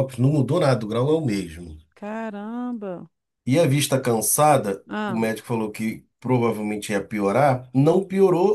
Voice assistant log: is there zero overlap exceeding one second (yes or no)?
yes